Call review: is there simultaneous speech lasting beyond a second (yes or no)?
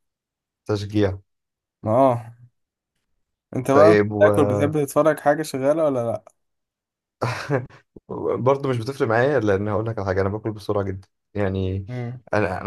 no